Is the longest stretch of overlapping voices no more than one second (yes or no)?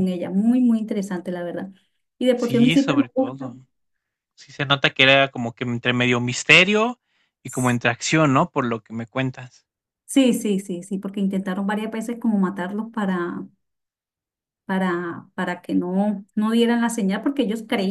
no